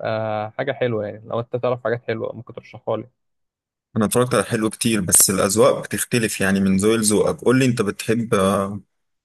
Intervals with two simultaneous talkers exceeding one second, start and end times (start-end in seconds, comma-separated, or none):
none